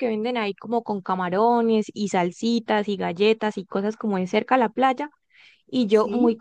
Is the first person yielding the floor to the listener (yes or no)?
no